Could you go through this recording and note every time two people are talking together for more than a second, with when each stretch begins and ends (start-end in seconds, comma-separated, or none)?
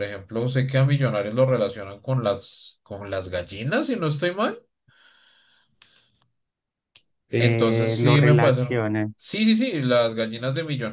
7.4-8.7